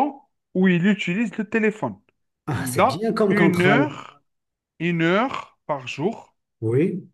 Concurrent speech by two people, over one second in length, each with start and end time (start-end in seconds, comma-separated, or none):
2.6-3.9